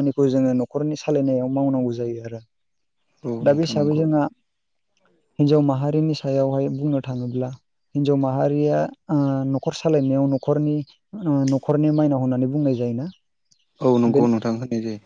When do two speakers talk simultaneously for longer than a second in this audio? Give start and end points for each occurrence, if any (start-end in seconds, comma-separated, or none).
none